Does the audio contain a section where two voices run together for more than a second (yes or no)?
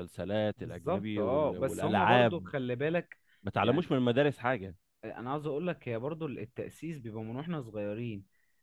yes